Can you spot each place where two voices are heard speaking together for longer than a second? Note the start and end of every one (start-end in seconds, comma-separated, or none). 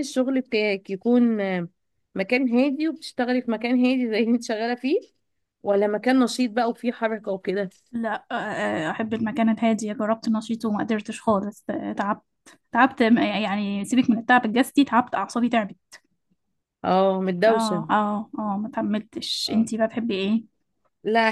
none